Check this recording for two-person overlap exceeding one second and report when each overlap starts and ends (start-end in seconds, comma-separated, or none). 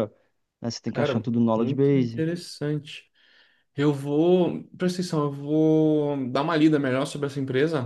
0.9-2.2